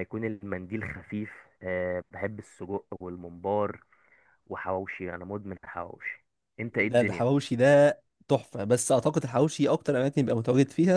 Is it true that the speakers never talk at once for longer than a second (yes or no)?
yes